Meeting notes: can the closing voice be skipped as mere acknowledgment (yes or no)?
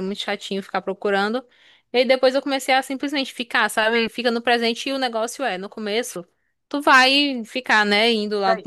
yes